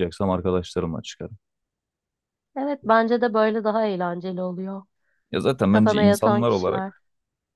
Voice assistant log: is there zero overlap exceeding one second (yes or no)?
no